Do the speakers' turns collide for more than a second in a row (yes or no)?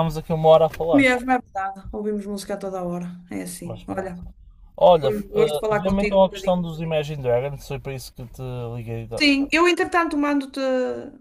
yes